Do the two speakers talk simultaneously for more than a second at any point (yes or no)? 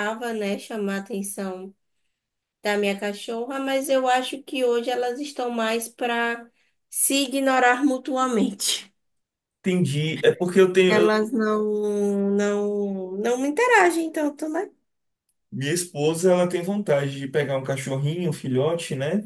no